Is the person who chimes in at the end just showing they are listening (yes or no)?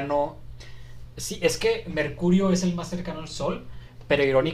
yes